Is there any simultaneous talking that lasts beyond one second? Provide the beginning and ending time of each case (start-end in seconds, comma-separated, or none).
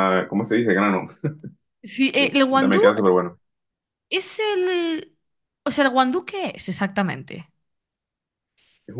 none